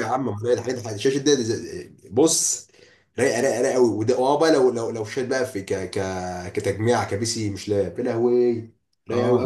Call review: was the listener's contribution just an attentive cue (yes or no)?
no